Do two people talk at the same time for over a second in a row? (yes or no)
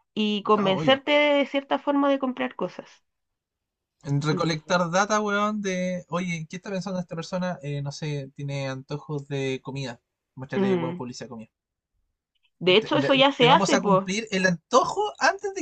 yes